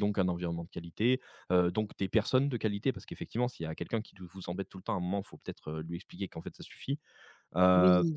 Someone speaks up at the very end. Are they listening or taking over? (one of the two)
listening